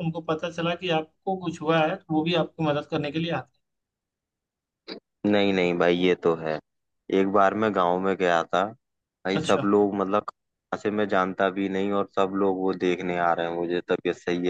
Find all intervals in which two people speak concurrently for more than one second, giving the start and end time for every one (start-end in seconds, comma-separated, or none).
none